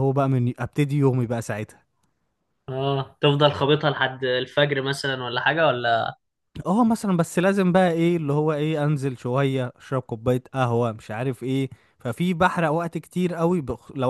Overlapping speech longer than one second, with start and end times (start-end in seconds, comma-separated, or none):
none